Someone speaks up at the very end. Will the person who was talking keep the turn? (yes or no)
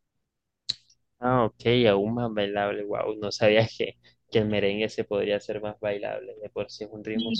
no